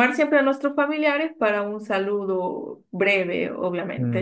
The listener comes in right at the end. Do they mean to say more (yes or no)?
yes